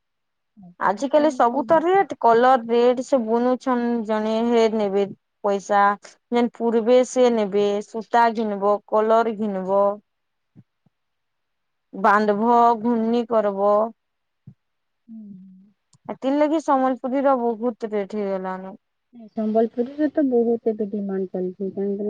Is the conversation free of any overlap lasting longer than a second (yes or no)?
yes